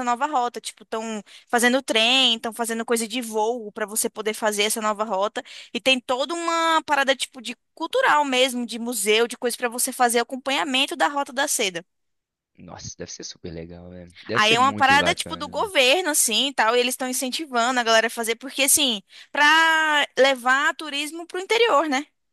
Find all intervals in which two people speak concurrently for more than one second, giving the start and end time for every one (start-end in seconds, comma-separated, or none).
14.3-15.7